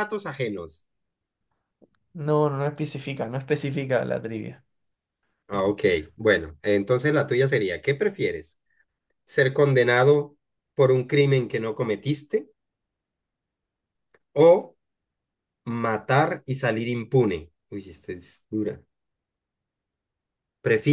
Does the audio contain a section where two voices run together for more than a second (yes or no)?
no